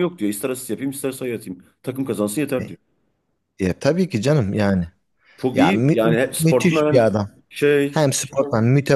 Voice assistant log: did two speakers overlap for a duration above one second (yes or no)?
yes